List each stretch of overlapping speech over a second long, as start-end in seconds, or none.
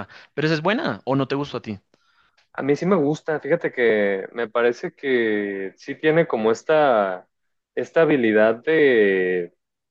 none